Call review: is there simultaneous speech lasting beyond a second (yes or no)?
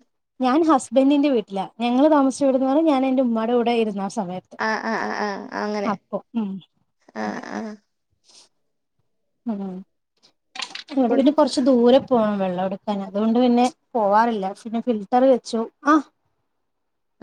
no